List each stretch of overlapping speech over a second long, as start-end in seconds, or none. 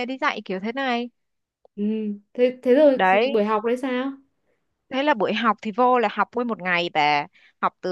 none